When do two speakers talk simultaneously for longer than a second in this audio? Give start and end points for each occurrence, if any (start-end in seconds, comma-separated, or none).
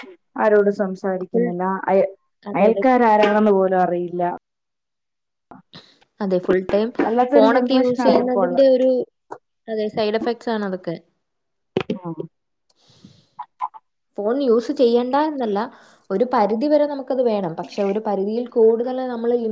7.3-8.7